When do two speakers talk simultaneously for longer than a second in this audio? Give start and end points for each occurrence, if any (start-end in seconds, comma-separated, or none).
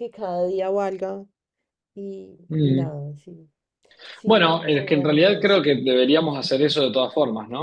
4.2-5.6